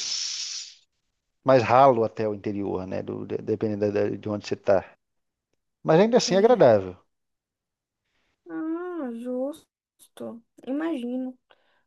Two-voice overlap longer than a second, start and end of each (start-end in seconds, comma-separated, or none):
none